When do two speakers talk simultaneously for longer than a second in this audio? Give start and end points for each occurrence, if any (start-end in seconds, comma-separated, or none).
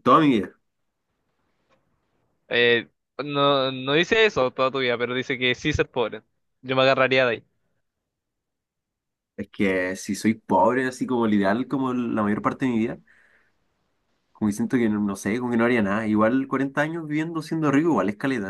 none